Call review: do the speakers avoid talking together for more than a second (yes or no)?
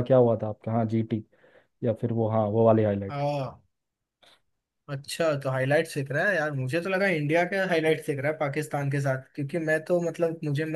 yes